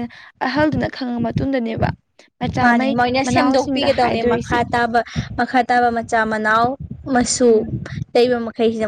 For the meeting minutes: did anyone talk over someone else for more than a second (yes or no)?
yes